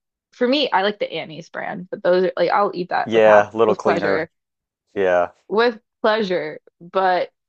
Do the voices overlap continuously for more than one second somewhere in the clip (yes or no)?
yes